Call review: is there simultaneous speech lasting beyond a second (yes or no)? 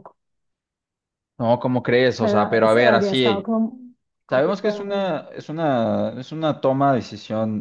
yes